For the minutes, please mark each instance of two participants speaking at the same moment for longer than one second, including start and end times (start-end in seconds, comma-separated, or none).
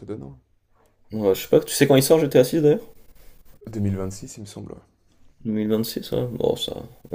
none